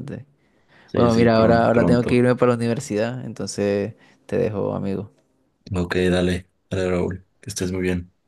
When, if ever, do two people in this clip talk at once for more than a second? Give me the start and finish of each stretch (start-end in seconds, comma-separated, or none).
0.9-2.2